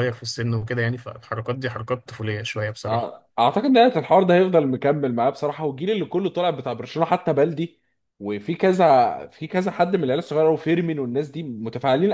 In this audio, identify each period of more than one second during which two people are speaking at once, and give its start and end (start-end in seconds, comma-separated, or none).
none